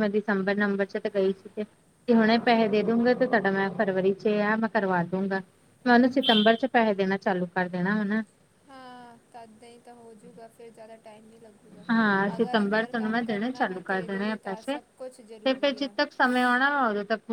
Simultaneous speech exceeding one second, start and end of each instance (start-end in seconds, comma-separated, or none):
12.3-14.0